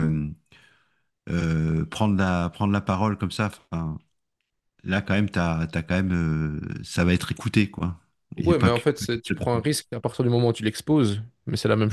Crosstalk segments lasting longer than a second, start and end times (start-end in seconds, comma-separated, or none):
8.4-9.6